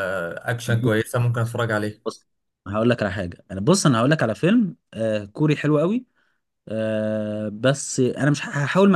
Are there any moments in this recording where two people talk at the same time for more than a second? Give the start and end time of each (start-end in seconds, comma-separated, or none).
none